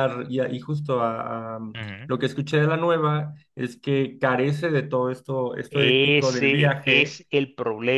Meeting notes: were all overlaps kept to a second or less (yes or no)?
no